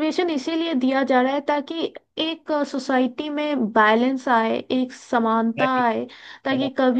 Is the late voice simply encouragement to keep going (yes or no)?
yes